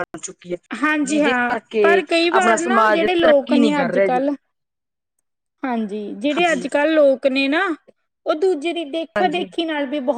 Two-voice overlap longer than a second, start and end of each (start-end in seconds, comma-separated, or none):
1.1-4.3